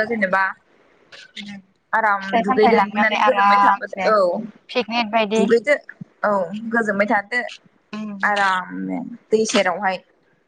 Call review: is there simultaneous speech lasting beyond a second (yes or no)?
yes